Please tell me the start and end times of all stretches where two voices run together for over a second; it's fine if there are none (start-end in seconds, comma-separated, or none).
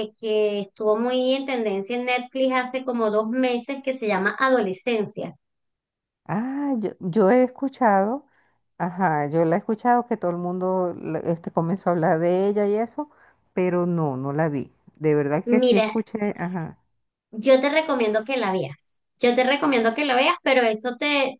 none